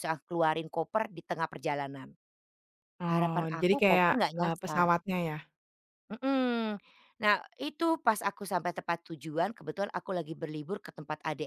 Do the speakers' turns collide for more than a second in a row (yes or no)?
yes